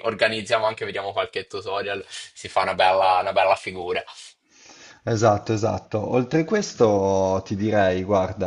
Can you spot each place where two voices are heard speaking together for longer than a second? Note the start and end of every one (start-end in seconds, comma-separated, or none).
none